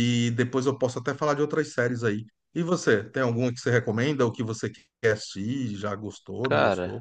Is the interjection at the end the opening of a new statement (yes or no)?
yes